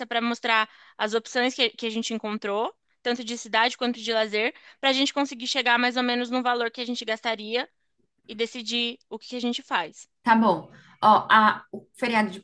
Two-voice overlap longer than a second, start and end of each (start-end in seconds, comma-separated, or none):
none